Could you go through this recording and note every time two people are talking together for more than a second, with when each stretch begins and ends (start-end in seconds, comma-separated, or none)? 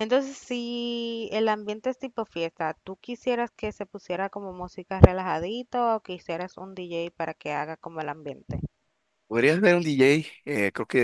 none